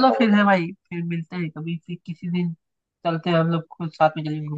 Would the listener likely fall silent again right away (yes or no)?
no